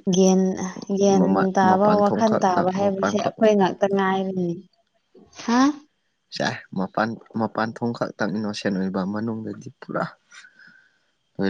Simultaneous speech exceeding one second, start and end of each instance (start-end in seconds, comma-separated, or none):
1.1-3.3